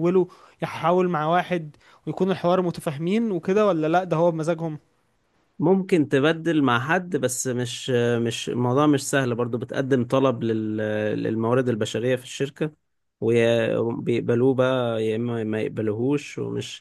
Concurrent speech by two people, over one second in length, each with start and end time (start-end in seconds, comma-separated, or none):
none